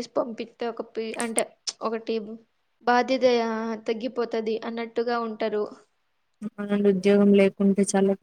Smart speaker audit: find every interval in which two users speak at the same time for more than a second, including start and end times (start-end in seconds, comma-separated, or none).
none